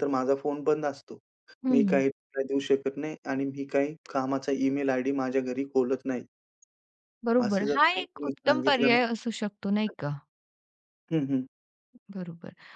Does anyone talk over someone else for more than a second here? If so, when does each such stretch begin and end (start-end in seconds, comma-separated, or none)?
7.5-9.0